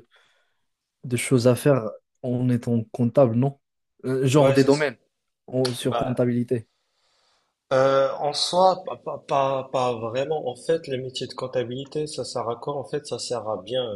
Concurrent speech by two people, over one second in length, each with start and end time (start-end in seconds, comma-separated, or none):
none